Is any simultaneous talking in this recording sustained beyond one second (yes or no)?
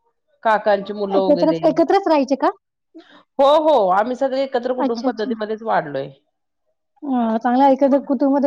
no